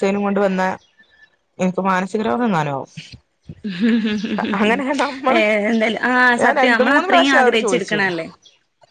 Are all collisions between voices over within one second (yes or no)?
no